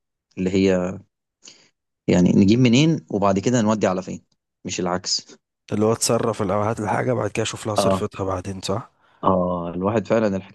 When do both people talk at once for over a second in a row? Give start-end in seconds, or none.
none